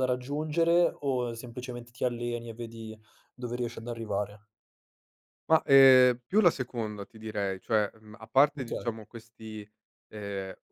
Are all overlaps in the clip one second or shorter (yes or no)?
yes